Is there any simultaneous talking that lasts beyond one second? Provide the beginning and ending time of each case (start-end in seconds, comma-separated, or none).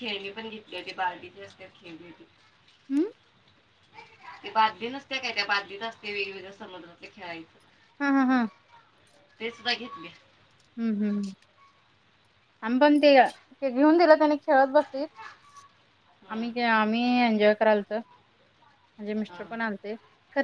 none